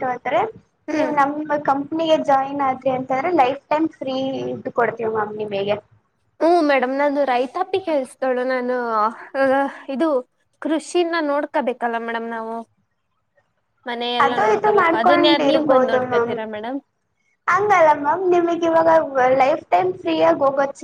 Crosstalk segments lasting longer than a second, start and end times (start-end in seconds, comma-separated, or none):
14.2-16.3